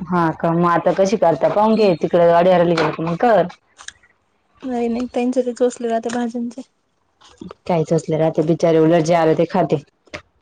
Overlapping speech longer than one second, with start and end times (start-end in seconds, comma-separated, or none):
none